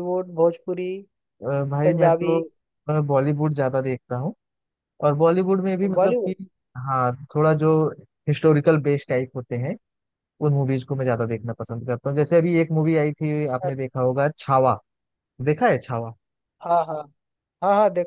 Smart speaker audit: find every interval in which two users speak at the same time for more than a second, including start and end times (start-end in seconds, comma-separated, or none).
none